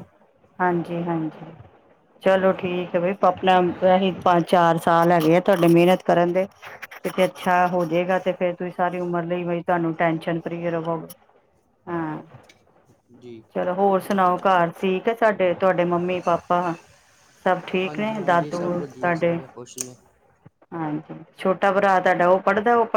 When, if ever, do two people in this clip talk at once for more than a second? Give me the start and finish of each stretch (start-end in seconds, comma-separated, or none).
18.1-19.3